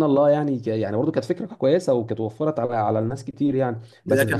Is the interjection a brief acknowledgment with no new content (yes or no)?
no